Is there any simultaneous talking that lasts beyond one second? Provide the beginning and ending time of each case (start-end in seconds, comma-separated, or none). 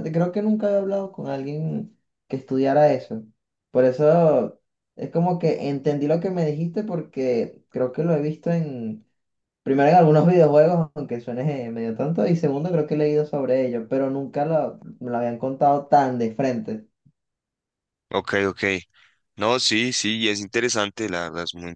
none